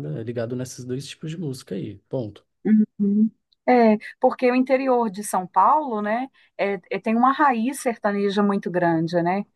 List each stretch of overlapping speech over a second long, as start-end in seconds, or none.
none